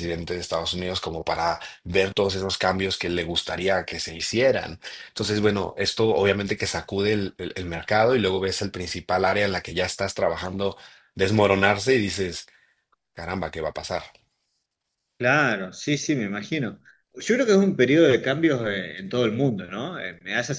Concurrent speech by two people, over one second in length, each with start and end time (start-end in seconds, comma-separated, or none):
none